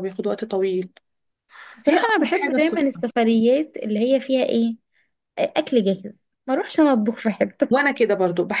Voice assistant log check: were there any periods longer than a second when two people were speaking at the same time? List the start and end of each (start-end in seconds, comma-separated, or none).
1.9-3.0